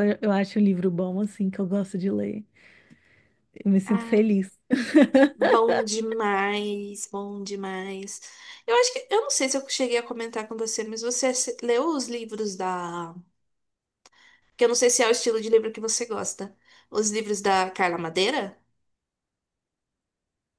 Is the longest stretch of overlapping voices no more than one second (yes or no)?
yes